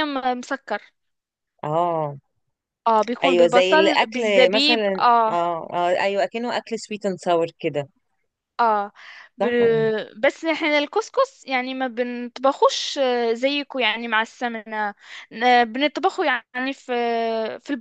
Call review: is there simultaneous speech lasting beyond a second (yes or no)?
yes